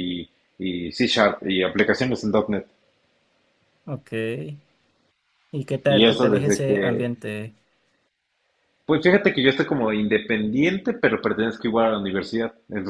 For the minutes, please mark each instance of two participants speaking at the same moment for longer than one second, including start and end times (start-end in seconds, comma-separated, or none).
5.8-7.1